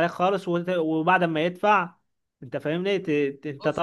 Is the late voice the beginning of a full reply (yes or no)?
no